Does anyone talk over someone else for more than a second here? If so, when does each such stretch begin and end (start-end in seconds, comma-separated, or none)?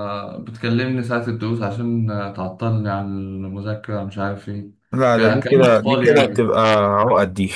5.1-6.5